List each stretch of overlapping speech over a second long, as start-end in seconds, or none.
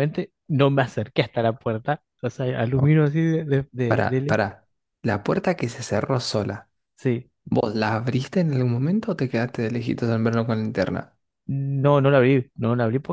none